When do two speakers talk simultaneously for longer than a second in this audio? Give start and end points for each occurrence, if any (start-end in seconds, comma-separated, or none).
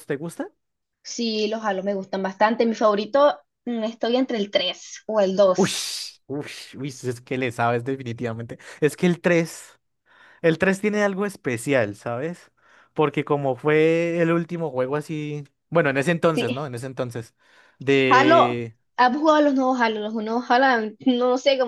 none